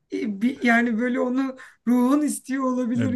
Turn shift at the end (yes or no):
yes